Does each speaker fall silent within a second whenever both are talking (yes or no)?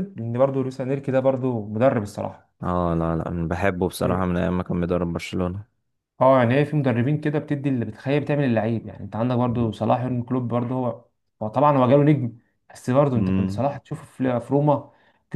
yes